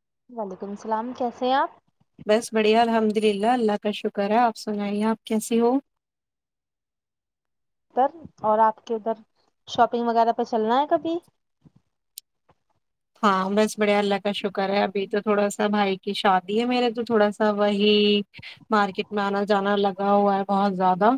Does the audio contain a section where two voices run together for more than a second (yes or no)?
no